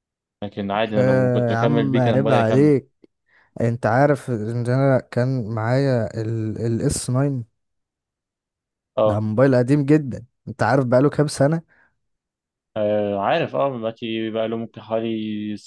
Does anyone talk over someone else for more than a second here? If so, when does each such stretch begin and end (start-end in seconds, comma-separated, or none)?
1.0-2.8